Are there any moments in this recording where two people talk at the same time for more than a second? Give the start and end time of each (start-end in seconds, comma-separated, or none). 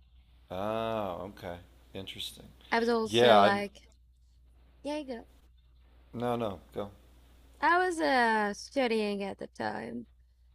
none